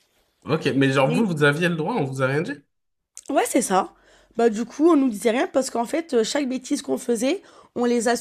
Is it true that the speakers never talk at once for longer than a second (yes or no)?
yes